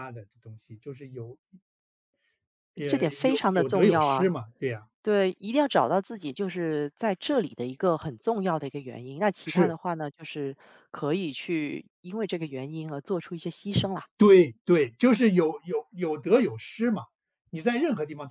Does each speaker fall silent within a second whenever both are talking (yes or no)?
no